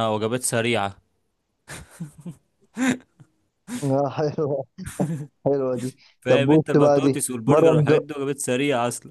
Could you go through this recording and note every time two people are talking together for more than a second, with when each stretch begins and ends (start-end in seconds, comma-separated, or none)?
6.2-8.0